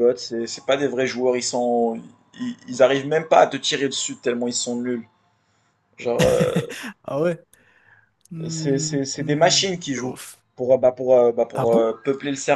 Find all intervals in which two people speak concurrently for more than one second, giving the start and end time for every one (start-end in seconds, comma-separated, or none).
8.5-10.2